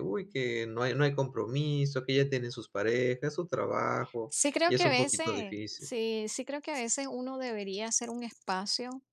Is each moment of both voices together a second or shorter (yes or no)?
no